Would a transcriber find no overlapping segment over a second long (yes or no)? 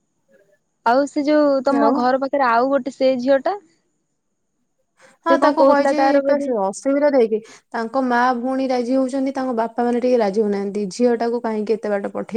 yes